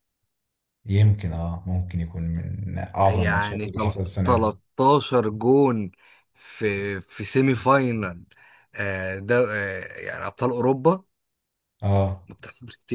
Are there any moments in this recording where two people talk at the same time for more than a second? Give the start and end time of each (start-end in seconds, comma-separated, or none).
3.1-4.5